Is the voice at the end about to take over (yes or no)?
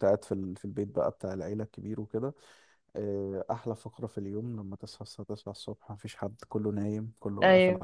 no